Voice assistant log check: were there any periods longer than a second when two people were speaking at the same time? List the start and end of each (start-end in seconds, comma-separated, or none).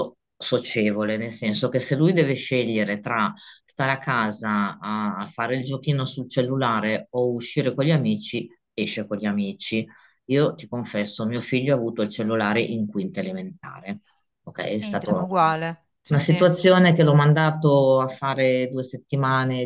none